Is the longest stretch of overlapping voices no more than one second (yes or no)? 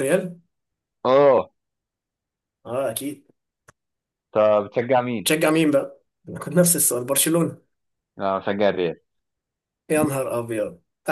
yes